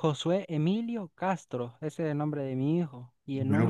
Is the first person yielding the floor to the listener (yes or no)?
yes